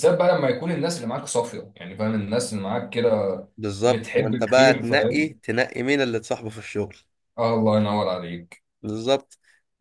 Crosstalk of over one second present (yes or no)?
yes